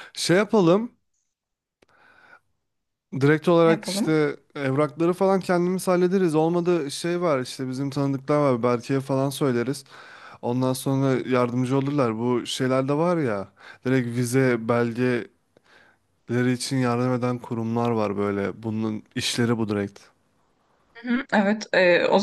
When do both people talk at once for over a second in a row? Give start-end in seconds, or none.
none